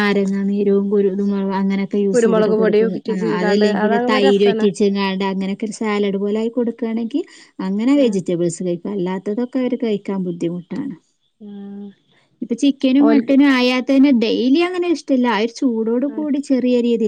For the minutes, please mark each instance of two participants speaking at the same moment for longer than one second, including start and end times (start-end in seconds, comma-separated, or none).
2.1-4.7